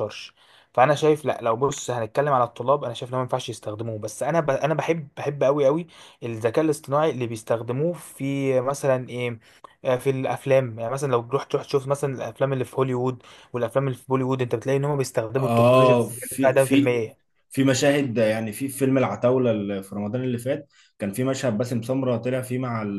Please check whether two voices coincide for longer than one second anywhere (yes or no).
yes